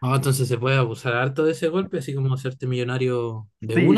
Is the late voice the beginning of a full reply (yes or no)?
yes